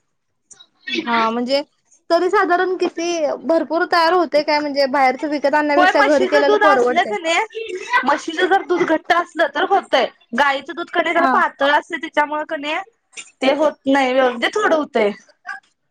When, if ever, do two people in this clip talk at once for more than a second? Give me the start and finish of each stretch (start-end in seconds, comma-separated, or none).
5.8-7.1